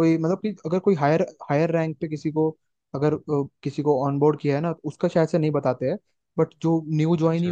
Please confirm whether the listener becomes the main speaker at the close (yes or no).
no